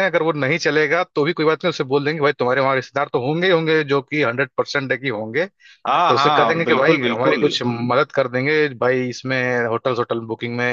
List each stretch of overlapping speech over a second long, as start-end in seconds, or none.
6.1-7.5